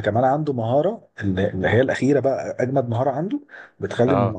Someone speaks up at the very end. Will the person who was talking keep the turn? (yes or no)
yes